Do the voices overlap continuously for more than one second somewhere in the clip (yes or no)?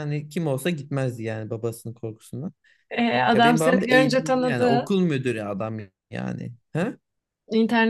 yes